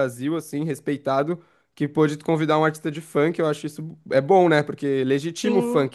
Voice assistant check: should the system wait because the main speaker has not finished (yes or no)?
yes